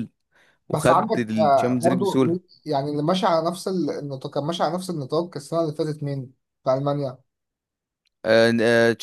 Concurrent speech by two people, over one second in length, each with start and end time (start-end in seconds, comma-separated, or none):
0.7-2.4